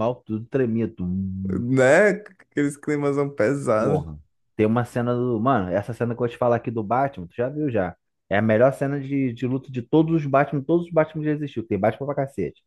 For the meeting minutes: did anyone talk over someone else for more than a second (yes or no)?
no